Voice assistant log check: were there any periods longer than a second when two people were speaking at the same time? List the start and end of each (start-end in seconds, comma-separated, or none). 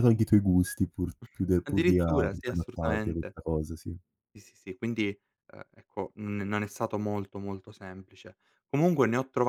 1.6-3.4